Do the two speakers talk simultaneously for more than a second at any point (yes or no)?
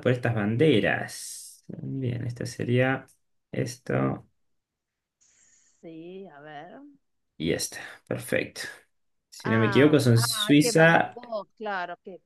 yes